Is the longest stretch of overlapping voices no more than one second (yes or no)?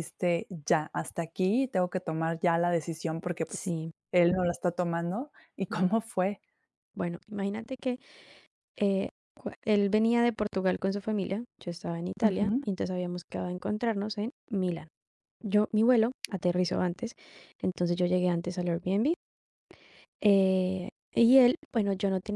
yes